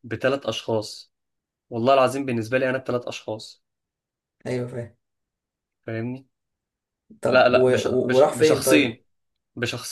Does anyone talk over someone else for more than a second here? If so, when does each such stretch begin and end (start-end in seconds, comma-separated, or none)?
7.3-9.0